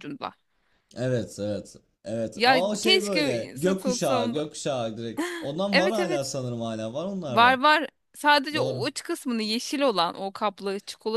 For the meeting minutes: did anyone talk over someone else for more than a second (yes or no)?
yes